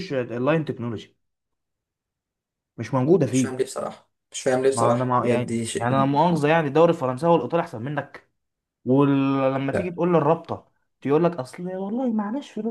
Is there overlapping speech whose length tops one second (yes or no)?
yes